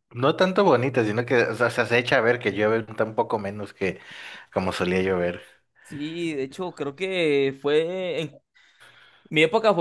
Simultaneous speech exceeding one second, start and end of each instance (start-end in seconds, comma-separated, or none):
none